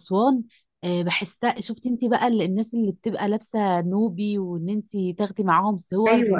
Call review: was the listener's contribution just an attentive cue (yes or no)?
no